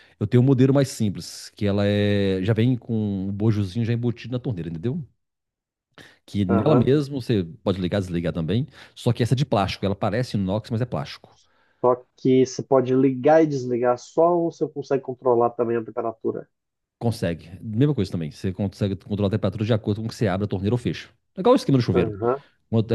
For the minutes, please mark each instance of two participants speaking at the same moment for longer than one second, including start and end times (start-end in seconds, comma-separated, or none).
none